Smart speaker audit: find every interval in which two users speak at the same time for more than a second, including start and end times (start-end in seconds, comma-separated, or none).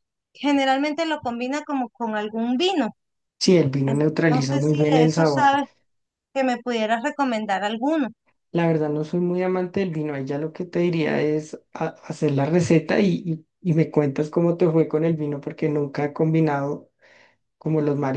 3.9-5.5